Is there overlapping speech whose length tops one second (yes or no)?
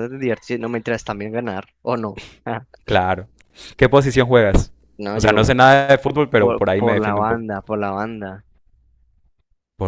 yes